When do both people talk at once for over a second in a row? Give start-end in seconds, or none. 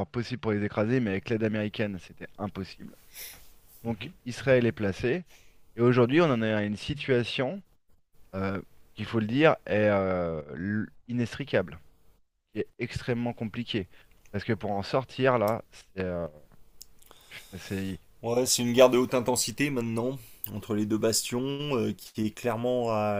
none